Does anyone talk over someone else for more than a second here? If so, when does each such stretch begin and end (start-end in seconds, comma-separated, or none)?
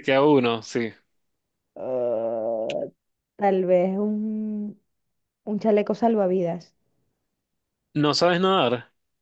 none